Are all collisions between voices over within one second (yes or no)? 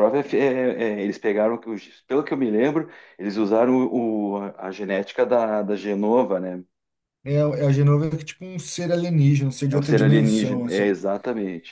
no